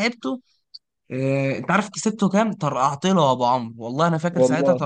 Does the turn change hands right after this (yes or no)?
no